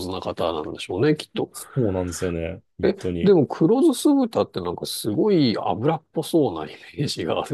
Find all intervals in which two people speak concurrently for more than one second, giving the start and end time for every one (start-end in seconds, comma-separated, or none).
none